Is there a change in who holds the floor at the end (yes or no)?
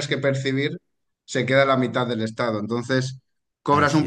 no